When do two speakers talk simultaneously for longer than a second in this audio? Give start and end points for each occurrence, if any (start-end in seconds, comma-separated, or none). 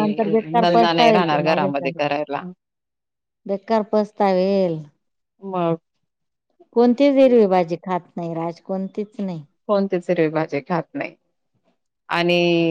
0.6-2.0